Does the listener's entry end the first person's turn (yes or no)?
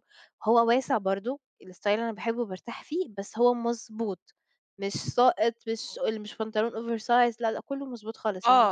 yes